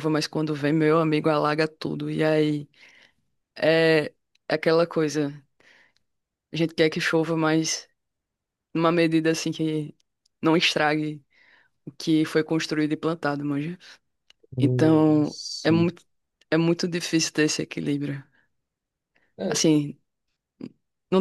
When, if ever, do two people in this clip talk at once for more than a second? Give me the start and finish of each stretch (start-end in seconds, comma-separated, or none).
14.6-15.9